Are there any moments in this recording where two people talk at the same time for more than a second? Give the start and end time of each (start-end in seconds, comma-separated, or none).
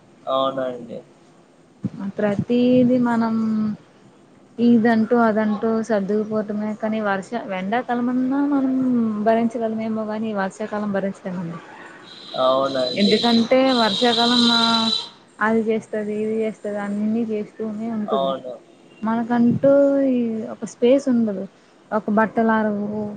none